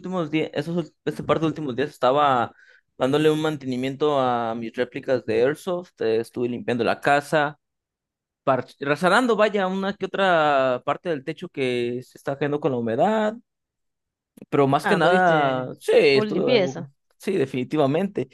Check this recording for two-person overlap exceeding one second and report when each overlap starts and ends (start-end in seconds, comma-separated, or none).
14.8-16.9